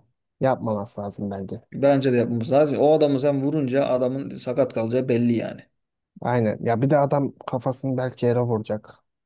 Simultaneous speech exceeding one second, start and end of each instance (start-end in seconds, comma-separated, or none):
none